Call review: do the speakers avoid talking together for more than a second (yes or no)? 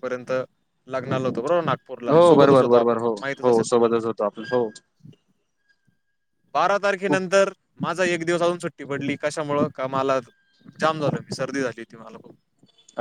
no